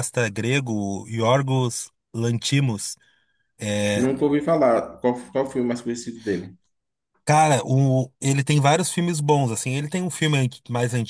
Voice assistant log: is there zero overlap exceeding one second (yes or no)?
yes